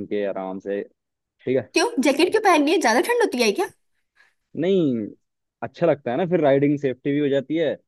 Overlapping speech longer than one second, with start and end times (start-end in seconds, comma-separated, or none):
none